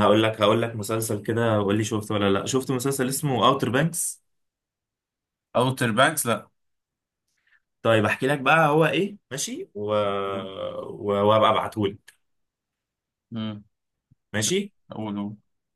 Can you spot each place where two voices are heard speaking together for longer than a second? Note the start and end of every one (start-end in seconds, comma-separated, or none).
none